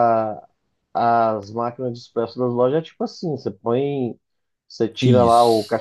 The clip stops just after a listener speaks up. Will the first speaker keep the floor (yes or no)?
yes